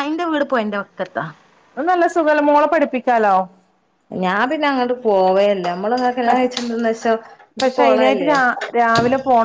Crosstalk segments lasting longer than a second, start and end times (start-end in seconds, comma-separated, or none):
none